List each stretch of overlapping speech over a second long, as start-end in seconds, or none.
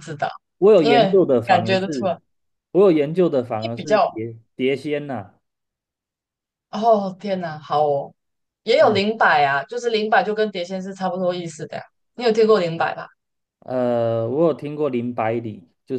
0.8-2.2